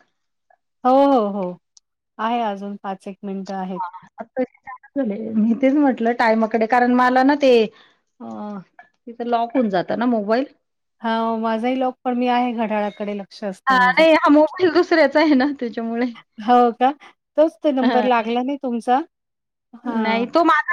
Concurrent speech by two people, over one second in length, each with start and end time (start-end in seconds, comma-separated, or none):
none